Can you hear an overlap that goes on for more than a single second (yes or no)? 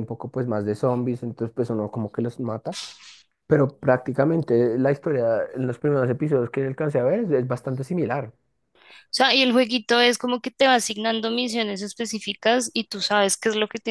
no